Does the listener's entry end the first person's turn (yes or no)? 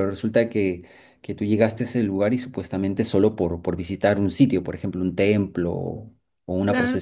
no